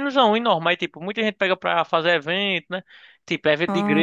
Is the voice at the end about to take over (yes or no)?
no